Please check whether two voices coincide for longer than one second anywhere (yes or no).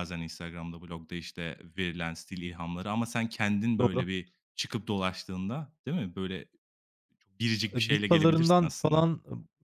yes